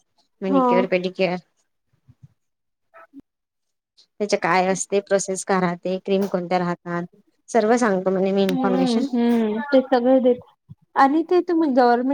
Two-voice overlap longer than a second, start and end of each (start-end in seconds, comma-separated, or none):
none